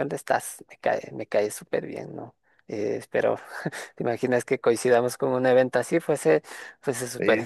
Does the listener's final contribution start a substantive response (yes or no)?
yes